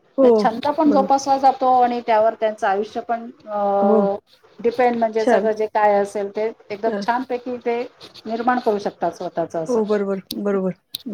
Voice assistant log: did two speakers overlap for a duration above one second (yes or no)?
no